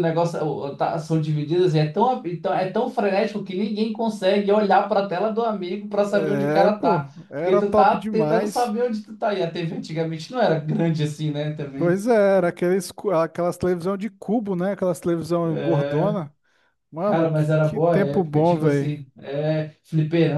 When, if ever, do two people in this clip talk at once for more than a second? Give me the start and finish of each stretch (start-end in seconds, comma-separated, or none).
6.1-8.8, 17.0-18.9